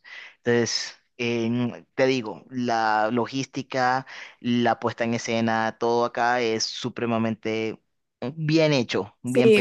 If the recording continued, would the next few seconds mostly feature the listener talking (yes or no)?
yes